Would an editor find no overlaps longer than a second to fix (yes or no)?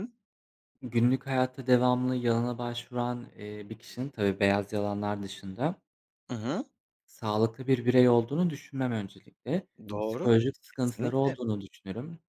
no